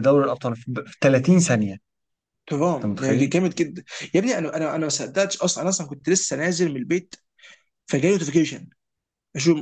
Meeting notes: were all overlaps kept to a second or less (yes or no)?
yes